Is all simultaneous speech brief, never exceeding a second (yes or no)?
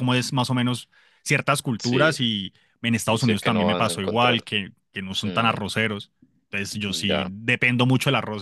no